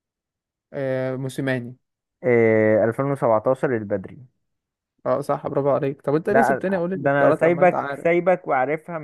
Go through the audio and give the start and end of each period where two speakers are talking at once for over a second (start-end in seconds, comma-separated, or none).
6.3-8.1